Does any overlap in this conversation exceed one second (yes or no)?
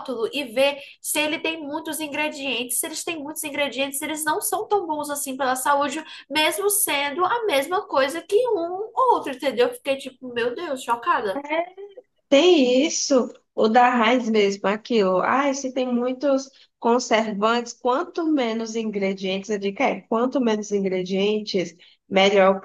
no